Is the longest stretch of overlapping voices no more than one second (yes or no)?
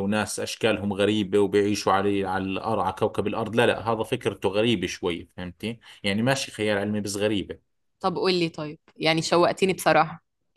yes